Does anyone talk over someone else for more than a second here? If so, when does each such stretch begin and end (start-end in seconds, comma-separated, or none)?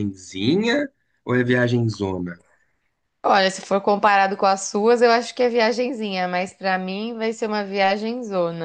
none